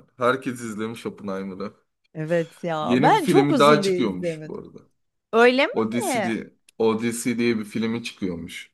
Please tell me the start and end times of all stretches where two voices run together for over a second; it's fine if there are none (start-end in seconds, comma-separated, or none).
2.8-4.7